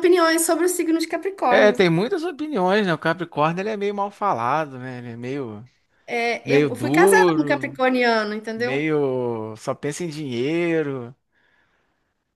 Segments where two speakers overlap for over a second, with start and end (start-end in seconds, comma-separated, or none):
6.5-7.8